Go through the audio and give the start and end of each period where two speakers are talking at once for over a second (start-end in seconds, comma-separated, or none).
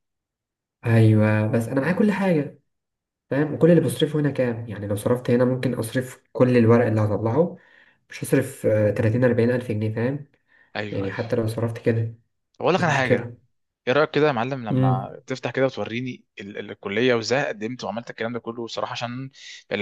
none